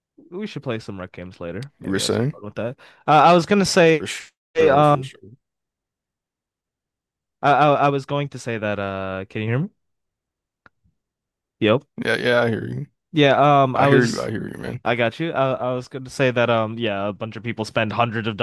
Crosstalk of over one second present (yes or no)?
no